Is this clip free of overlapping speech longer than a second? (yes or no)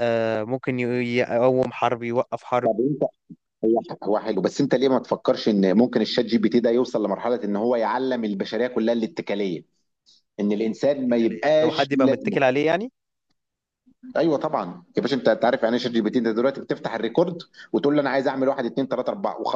no